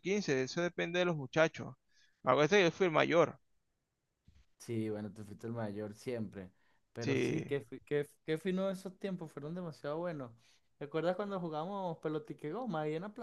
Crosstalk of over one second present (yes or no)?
no